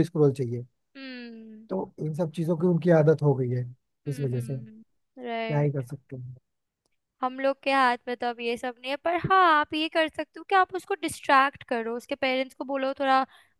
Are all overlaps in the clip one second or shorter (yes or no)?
yes